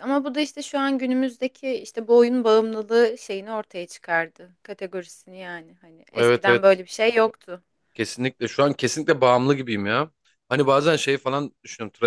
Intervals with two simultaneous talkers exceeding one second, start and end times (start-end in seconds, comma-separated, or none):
none